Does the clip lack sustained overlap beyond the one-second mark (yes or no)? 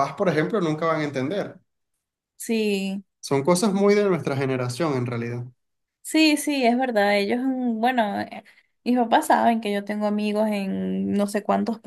yes